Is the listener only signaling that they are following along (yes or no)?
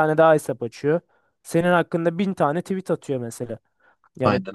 yes